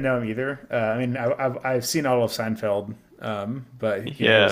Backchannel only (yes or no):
no